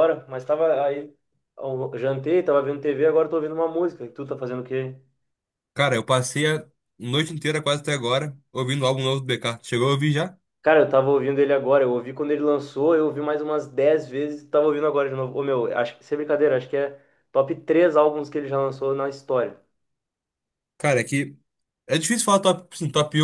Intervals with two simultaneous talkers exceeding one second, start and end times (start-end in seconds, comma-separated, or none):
none